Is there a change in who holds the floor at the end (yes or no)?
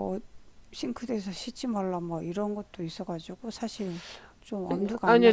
yes